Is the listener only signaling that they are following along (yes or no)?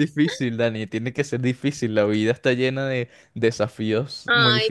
no